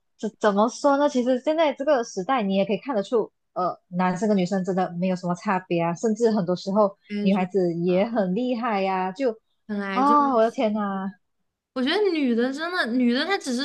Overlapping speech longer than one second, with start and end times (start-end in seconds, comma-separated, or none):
none